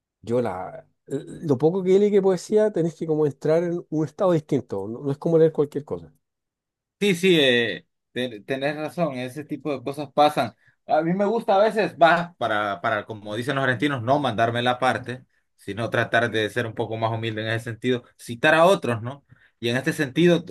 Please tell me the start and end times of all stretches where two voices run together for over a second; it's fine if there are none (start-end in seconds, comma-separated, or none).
none